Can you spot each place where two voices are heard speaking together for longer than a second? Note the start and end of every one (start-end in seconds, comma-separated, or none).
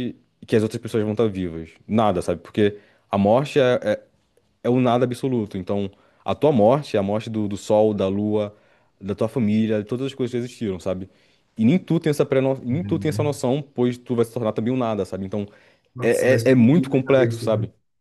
16.0-17.4